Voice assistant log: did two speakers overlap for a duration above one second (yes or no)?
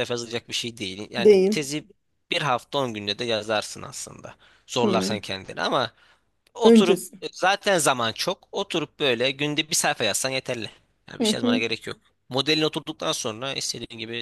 no